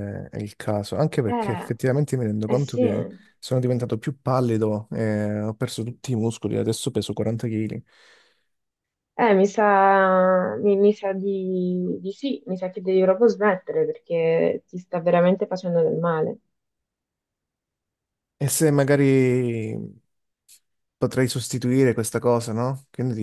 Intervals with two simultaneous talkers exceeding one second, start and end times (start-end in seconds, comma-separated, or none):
none